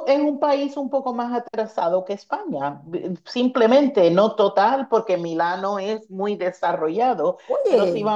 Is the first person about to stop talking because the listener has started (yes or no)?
no